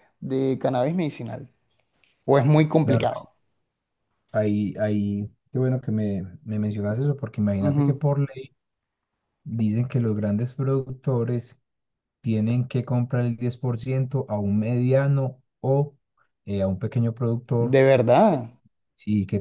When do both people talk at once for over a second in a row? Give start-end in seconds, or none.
none